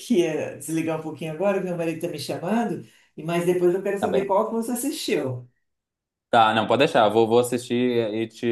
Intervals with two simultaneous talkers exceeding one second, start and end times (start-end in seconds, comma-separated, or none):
none